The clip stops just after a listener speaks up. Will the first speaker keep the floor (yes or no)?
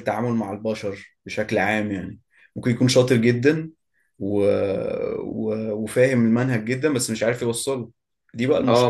no